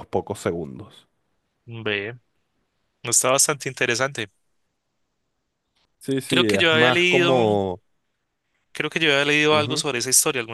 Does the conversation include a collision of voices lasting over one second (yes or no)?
yes